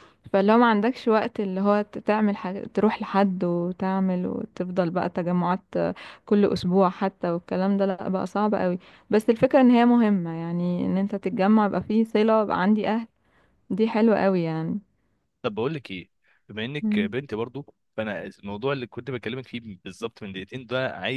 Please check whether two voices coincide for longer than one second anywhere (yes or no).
no